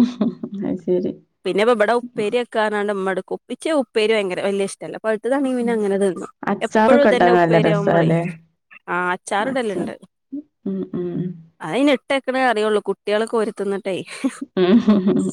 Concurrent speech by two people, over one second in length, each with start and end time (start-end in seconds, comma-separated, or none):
6.7-8.2